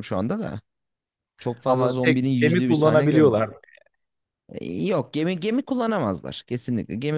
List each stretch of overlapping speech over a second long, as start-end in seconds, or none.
1.6-3.4